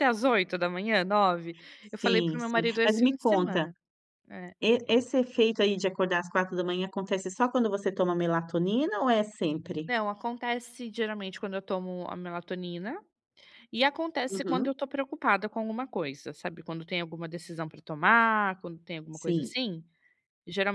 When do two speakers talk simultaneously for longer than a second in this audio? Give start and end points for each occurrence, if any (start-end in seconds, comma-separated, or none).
2.0-3.7